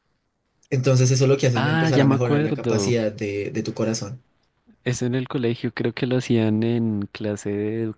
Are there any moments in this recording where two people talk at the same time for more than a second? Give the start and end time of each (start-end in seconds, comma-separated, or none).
1.5-3.0